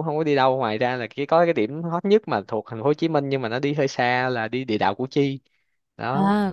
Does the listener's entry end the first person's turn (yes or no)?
yes